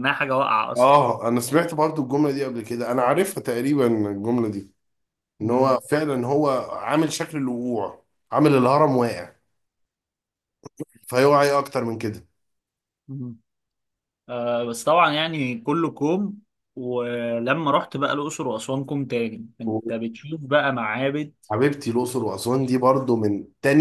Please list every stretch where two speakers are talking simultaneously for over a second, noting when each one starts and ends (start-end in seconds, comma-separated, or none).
none